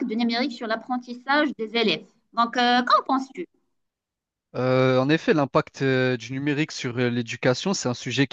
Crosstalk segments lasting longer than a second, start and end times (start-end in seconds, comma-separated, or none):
none